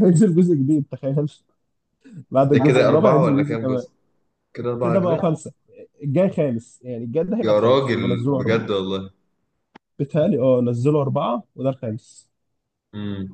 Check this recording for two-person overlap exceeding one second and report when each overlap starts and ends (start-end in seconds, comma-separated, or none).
2.5-3.8, 7.4-8.7